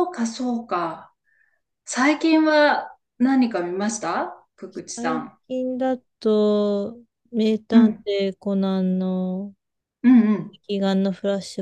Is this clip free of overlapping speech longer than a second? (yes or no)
yes